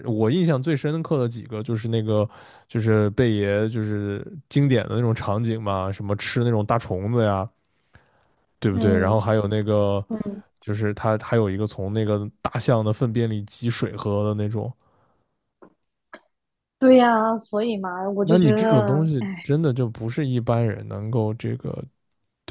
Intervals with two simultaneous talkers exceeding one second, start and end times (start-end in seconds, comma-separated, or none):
18.2-19.5